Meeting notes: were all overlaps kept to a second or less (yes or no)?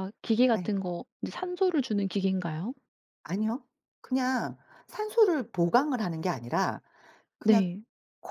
yes